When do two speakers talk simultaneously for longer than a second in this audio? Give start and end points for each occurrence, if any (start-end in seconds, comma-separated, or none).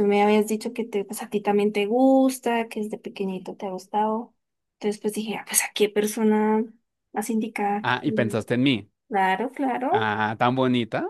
none